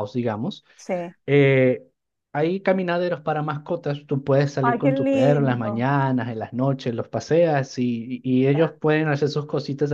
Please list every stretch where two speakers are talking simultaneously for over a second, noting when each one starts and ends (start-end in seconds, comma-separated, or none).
4.6-5.9